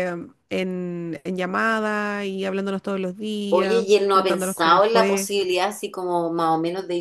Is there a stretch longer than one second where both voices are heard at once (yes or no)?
yes